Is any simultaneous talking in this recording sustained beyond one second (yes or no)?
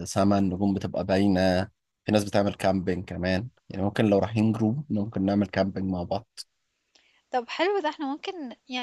no